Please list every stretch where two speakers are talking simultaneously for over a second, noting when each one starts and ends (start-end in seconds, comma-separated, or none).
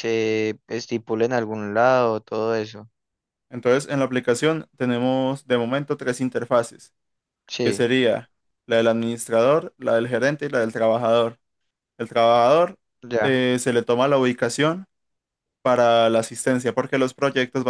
none